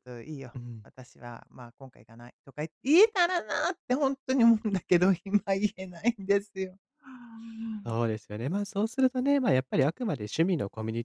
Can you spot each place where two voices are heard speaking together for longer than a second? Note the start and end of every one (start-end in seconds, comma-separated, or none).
none